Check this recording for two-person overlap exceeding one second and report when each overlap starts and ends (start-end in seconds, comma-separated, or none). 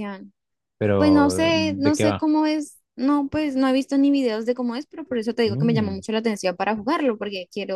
1.0-2.3